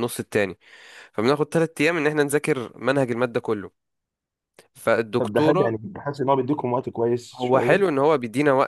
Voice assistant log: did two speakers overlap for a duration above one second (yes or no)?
no